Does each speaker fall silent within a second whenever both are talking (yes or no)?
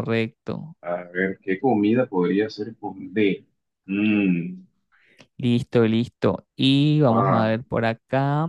yes